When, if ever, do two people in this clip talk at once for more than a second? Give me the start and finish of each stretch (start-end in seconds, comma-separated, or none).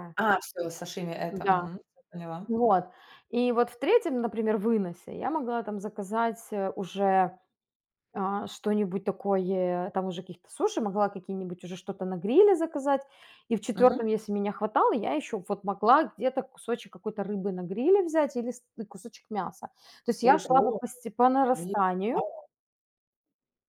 none